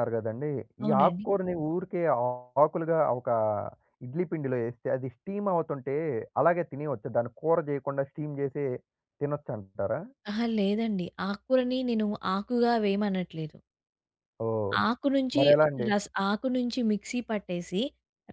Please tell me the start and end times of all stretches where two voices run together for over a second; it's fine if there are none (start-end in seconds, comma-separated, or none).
none